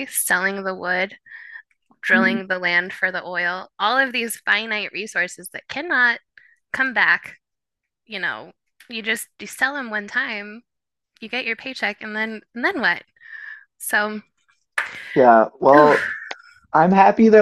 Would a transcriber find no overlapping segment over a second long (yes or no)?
yes